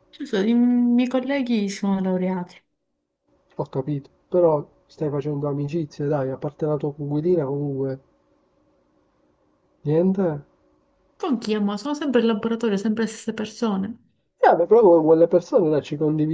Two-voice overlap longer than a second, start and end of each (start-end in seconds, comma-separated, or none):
none